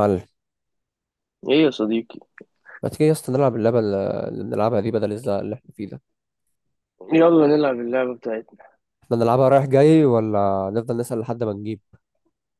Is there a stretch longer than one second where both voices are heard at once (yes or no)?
no